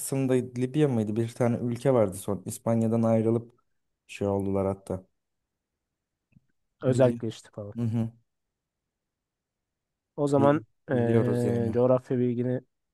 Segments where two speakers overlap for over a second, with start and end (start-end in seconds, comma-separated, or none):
10.3-11.8